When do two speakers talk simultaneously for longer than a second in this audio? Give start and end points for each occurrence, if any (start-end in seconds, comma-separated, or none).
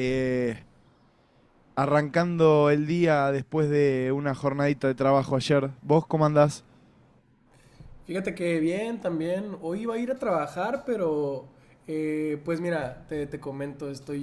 none